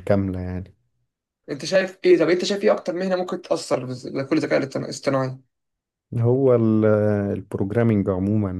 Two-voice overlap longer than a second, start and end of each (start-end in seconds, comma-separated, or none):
none